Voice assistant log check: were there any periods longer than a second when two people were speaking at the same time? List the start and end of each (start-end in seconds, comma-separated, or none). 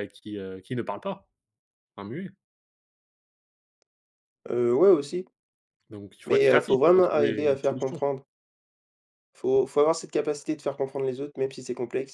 6.3-8.0